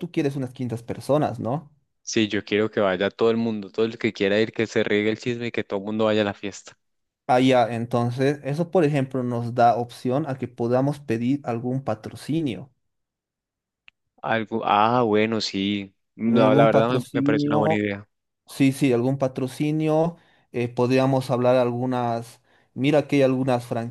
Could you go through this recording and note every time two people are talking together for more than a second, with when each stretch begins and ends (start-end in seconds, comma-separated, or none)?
16.3-17.8